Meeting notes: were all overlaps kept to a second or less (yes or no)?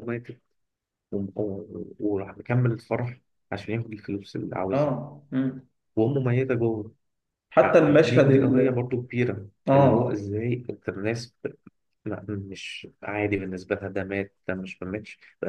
no